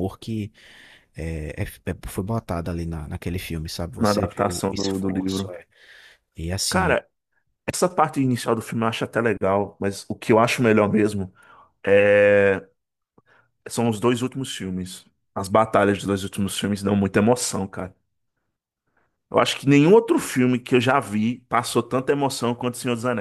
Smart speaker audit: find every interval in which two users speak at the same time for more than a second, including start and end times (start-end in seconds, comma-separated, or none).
4.0-5.5